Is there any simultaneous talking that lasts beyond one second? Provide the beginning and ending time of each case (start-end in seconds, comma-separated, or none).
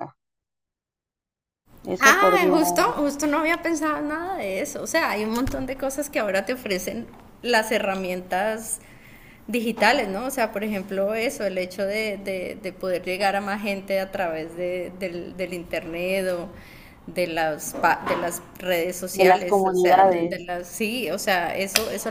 19.1-20.5